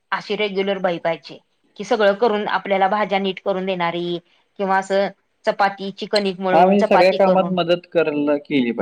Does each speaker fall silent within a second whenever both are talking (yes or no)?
no